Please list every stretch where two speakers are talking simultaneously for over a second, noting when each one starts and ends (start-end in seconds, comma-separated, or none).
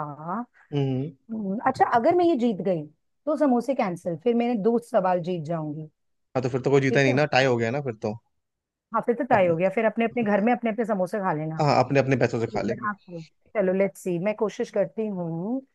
none